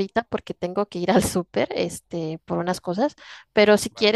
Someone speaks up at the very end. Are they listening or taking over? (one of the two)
listening